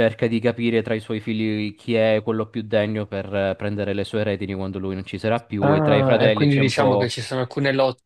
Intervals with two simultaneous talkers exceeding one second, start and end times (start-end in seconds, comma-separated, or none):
5.6-7.1